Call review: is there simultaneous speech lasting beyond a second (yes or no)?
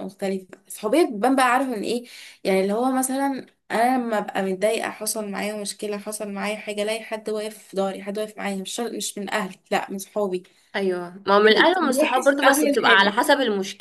yes